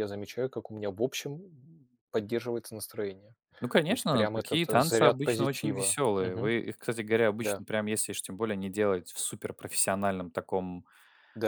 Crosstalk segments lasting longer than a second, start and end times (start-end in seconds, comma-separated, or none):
3.9-6.5